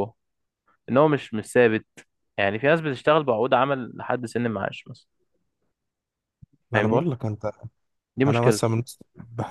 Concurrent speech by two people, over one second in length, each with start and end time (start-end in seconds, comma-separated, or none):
none